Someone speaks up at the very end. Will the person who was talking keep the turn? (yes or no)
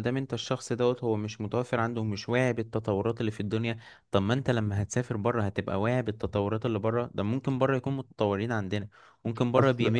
yes